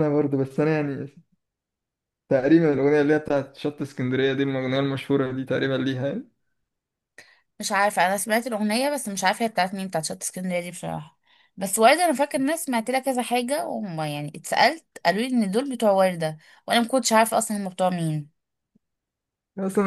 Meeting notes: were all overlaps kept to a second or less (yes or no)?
yes